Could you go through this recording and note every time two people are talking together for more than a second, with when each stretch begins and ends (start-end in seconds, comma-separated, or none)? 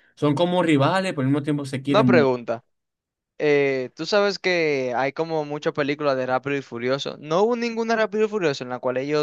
none